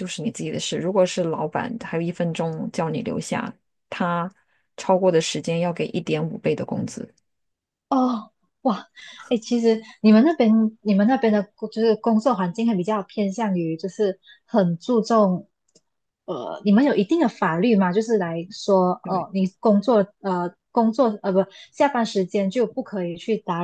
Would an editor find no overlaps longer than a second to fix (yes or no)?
yes